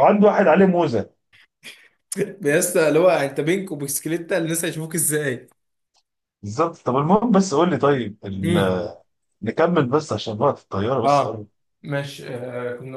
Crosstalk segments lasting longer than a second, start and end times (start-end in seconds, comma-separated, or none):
none